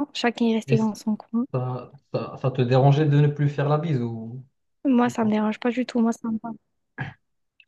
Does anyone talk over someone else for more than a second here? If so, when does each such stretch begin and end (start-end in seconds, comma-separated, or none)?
none